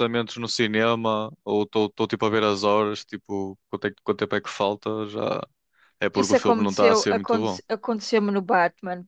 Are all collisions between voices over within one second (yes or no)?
no